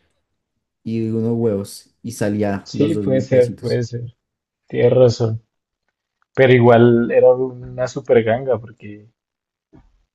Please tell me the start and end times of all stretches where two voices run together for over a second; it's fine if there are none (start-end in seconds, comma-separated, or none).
2.6-3.9